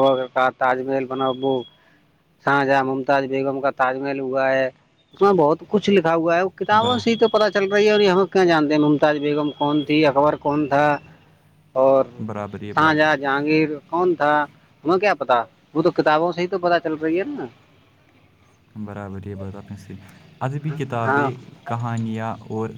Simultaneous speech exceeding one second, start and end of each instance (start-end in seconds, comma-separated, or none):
none